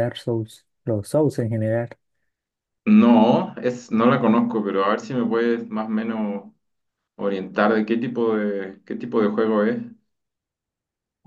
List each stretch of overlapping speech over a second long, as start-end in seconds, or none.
none